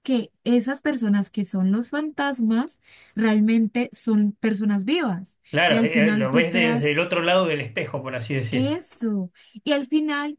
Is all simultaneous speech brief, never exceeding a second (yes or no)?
no